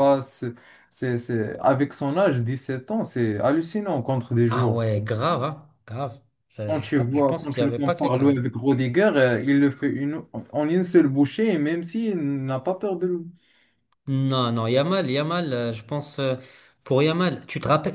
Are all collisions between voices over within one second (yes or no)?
no